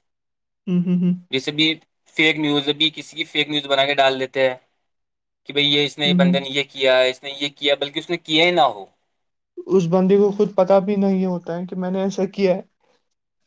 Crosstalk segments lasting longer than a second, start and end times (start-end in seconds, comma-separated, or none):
none